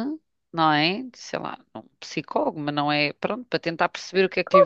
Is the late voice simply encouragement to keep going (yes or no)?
no